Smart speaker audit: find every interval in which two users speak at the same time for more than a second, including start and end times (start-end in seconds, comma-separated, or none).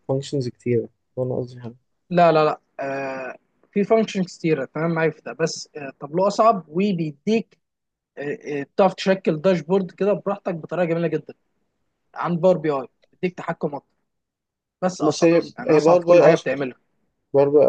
15.1-16.6